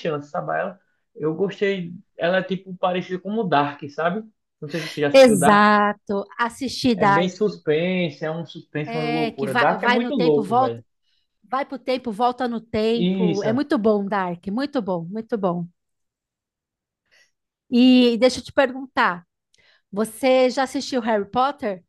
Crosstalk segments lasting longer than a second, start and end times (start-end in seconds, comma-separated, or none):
8.8-10.8